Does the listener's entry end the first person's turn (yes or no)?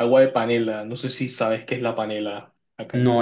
yes